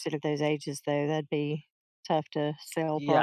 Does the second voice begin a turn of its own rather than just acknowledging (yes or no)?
yes